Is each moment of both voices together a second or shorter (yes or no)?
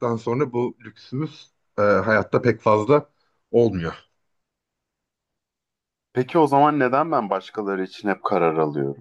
yes